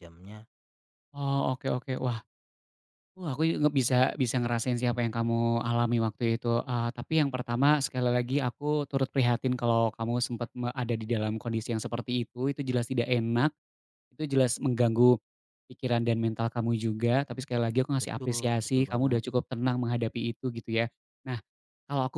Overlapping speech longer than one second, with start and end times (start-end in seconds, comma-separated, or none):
18.0-19.2